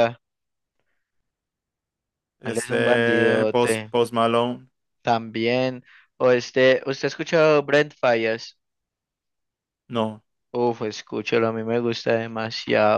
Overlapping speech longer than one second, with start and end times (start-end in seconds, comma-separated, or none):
2.4-4.0